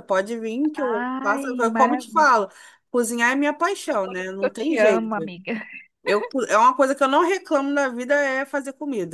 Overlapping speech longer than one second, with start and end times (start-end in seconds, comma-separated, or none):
0.9-2.3, 3.9-5.3